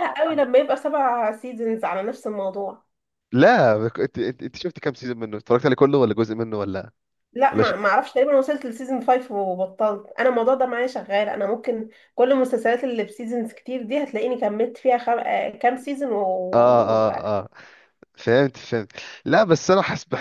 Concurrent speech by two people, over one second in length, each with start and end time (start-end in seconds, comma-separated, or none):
none